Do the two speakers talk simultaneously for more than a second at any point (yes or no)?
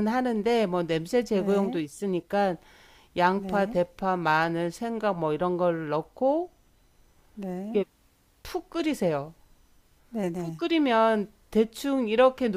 no